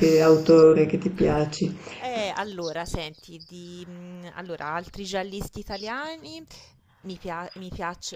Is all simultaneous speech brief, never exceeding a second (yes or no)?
yes